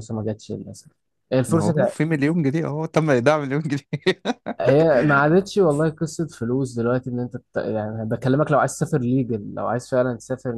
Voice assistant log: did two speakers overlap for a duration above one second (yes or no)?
no